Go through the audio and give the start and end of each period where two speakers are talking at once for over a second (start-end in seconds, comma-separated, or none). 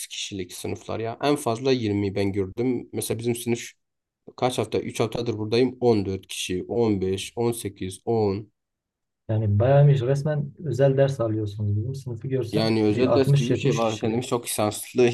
12.5-14.2